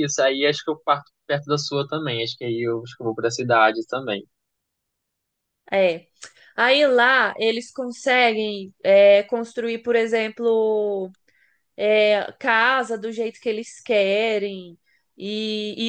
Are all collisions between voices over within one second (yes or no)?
yes